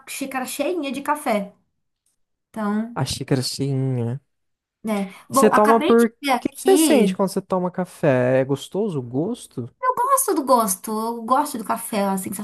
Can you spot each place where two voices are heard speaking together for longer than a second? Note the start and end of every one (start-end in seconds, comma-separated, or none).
5.3-7.2